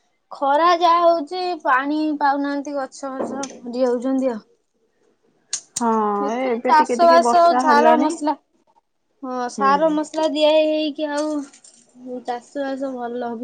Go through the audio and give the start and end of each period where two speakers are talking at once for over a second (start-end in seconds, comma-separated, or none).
6.3-8.1